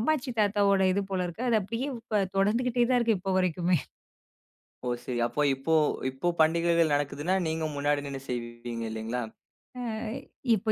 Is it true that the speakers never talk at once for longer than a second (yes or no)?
yes